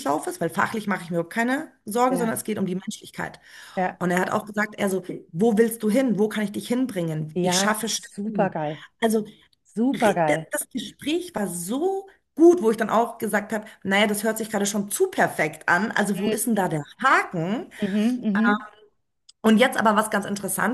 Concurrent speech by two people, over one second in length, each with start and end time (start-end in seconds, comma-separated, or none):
7.3-8.6